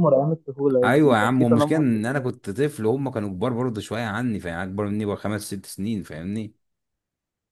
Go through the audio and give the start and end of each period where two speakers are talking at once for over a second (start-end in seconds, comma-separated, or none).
0.8-2.0